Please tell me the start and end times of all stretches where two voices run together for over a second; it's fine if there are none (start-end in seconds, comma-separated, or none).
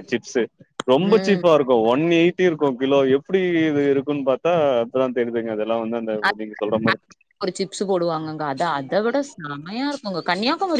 none